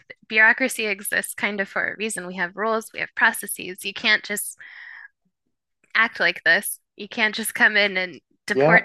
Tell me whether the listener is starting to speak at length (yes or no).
no